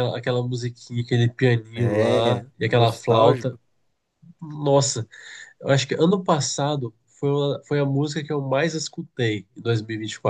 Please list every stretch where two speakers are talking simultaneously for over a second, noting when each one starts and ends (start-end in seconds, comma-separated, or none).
1.7-3.6